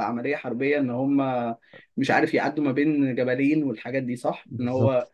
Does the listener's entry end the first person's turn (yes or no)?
yes